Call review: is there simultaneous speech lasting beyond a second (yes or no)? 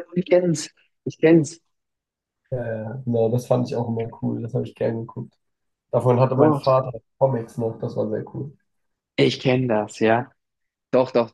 no